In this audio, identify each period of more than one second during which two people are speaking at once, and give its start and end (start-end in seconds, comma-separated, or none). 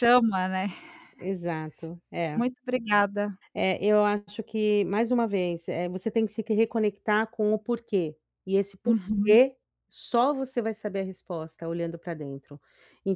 none